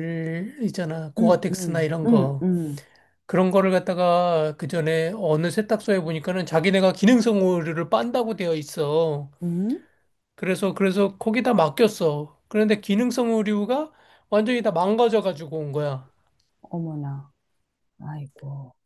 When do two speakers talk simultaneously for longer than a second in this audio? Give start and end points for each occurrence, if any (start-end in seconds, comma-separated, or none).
1.2-2.5